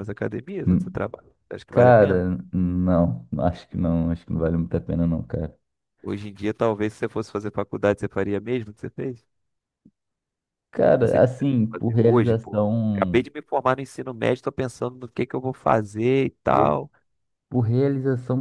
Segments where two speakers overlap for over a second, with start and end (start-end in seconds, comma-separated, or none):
11.0-13.2